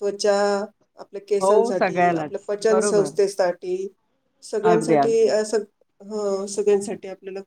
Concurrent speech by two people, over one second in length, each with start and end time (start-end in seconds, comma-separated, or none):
1.4-3.1